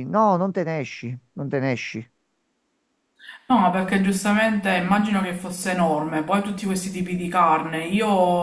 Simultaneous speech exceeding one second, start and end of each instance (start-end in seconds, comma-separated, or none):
none